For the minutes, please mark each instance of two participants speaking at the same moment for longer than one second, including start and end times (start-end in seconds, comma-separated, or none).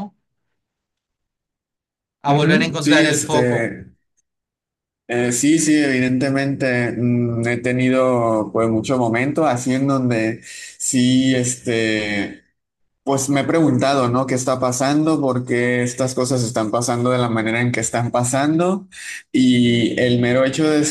2.3-3.7